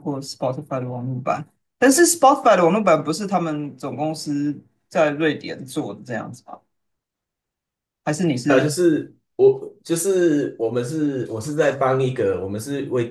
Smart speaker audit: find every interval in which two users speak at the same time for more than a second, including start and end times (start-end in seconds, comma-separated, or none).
none